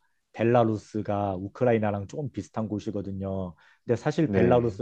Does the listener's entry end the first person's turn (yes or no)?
no